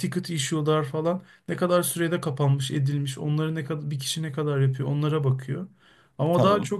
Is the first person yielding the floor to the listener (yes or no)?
no